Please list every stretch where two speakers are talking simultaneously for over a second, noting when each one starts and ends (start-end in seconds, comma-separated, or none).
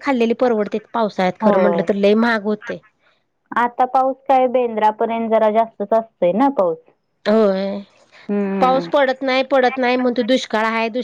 none